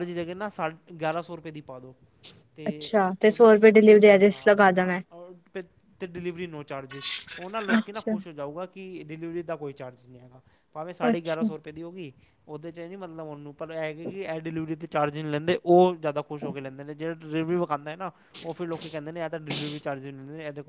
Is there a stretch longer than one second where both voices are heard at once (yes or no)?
yes